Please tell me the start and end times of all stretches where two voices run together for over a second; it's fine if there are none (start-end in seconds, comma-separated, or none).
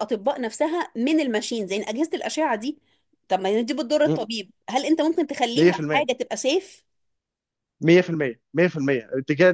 none